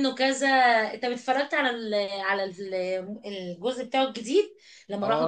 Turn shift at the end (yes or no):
yes